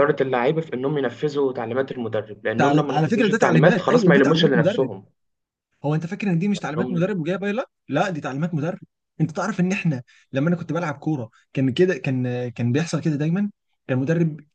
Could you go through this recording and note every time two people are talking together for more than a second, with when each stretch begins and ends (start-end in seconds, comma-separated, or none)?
2.5-4.9